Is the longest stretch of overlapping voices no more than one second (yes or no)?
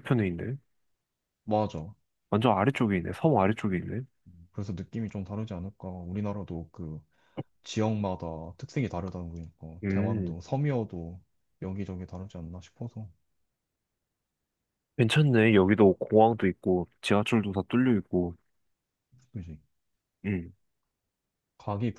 yes